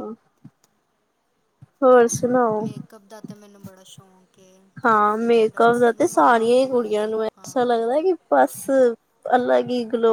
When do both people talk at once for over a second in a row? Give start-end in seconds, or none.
4.9-7.5